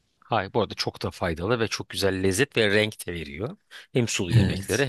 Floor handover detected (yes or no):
no